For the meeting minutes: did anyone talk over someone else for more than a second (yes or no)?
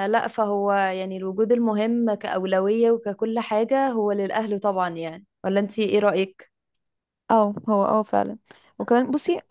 no